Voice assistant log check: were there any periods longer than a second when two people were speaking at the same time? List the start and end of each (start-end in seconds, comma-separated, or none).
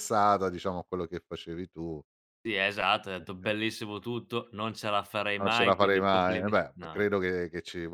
5.4-7.1